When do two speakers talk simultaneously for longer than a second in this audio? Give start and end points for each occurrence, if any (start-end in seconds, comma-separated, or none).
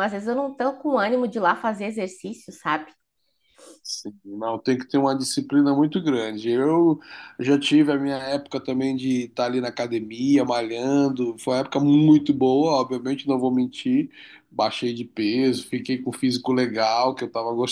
none